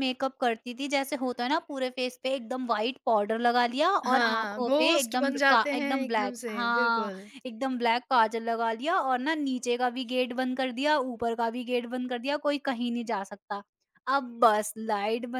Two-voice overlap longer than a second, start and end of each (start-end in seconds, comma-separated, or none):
4.1-7.1